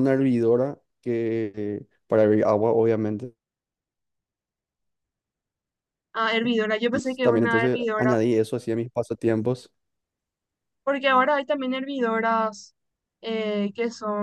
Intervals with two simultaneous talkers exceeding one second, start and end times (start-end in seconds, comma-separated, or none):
6.9-8.2